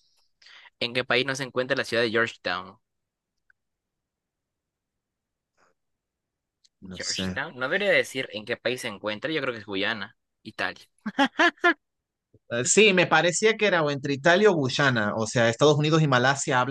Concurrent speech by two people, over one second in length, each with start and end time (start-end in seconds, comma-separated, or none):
none